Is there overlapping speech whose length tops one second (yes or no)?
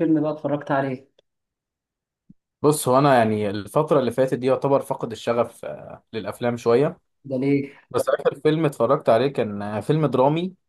no